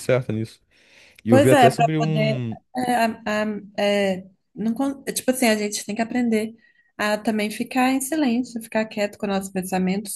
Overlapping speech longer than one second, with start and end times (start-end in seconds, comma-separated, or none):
1.3-2.6